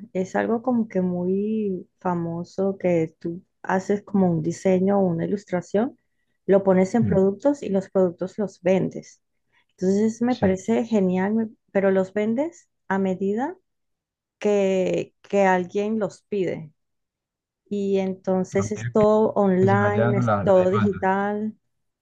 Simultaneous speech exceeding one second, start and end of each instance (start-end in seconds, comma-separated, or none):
19.6-21.1